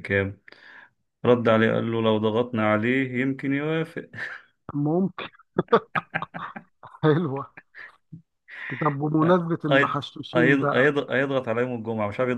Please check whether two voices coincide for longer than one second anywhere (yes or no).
no